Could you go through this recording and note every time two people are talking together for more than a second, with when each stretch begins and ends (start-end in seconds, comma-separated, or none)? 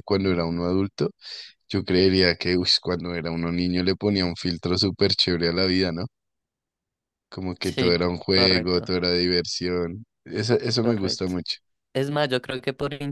7.6-8.9